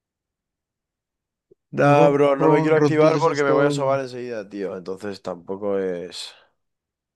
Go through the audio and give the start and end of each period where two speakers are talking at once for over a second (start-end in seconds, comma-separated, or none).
1.8-4.0